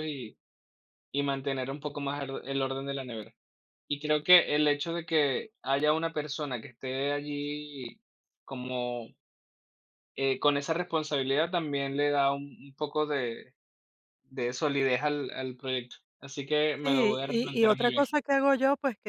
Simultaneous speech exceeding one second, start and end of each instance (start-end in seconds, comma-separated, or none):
16.8-18.0